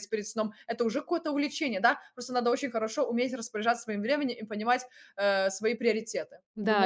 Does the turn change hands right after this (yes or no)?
yes